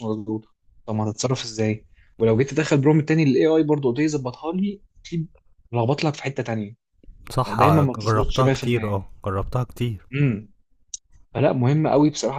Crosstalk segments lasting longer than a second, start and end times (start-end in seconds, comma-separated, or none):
7.5-9.1